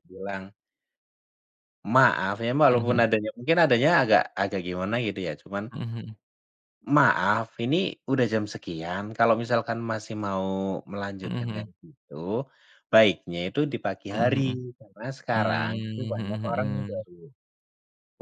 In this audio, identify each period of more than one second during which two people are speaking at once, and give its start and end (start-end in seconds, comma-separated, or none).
15.3-17.0